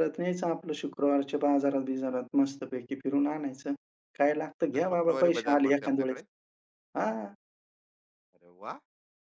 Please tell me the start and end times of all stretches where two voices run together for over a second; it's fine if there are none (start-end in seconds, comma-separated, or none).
4.7-6.2